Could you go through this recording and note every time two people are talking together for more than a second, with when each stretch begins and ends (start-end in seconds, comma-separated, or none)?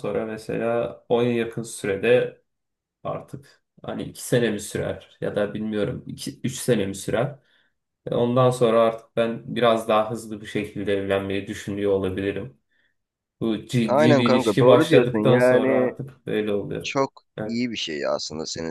13.9-15.9